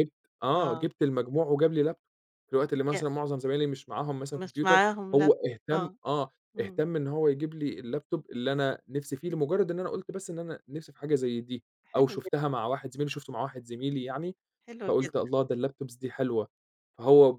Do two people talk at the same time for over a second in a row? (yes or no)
yes